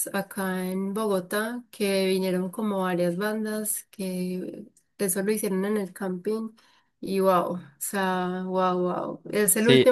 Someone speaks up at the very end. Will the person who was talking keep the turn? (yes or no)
yes